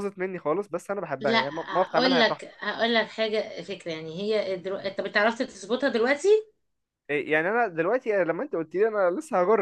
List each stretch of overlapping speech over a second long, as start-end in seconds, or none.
1.2-2.6